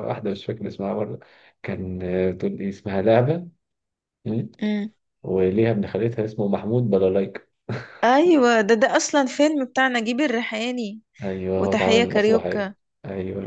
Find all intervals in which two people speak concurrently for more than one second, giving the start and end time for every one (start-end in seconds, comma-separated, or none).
11.5-12.8